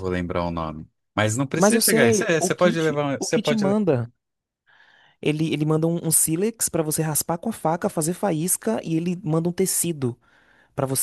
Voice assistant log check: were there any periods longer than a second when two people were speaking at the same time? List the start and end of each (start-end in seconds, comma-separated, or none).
1.5-3.8